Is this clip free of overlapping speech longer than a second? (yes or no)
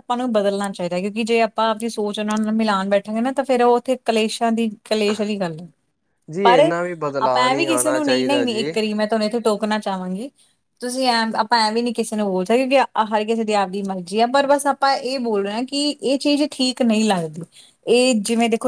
no